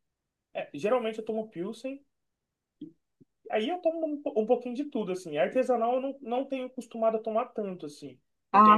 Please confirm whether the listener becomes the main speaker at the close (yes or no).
no